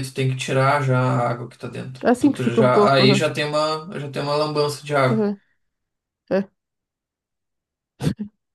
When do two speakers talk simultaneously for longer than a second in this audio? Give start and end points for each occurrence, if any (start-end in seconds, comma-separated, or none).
2.0-3.3